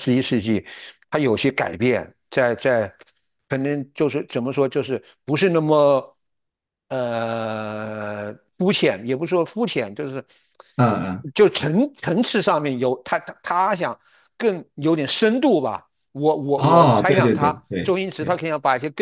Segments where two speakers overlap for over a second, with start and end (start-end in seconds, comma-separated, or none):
16.6-18.4